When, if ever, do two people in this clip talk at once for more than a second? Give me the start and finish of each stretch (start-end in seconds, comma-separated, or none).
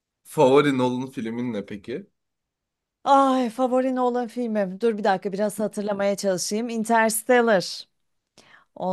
none